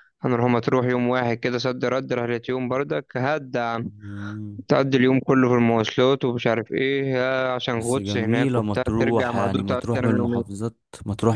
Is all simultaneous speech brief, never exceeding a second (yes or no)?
no